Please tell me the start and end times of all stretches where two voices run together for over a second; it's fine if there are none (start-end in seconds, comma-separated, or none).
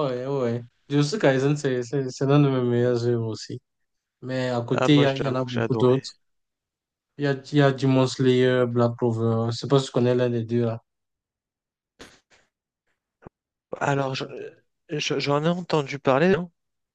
4.7-6.0